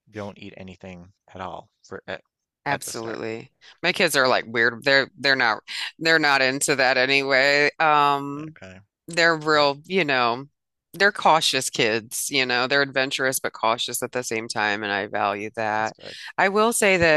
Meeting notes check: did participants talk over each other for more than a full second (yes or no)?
no